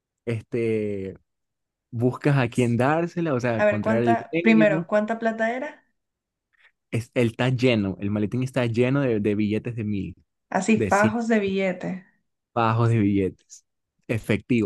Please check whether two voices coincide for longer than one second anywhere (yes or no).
yes